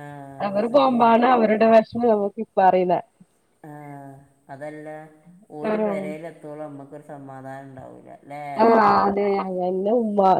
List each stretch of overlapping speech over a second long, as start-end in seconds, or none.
none